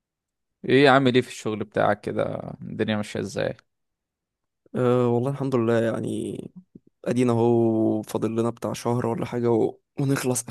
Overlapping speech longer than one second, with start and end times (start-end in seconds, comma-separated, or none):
none